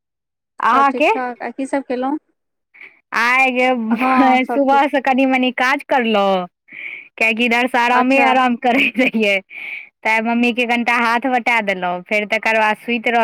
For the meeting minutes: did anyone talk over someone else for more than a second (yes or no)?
no